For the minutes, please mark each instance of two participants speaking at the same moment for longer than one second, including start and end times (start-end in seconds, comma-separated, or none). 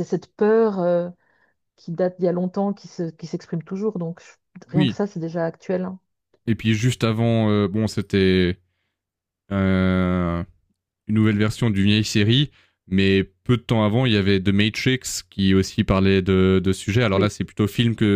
none